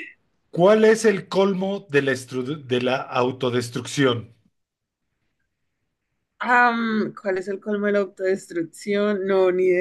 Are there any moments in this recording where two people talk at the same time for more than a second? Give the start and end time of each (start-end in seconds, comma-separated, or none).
none